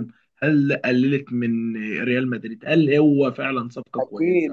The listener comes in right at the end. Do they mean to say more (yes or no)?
yes